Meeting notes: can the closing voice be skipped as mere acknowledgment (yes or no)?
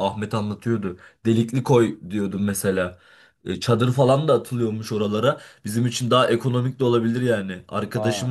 yes